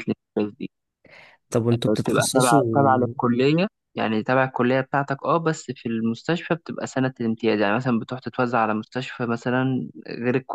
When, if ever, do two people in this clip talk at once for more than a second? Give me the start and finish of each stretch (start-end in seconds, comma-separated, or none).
1.9-3.1